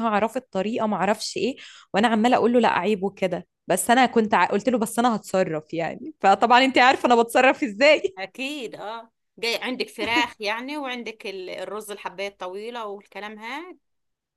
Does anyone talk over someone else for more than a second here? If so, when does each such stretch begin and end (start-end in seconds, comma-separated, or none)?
none